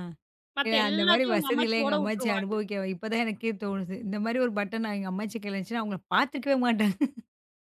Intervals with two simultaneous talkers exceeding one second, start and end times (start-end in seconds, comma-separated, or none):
0.7-2.5